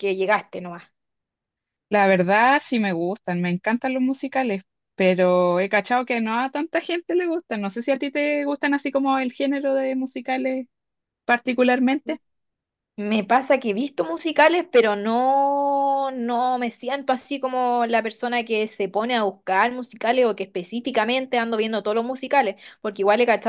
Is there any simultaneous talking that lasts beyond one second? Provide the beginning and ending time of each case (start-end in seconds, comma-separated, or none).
none